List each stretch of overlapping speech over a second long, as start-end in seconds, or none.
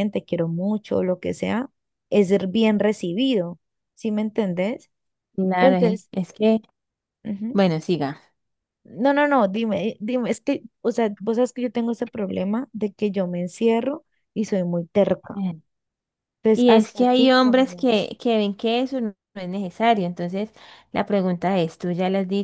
16.5-18.1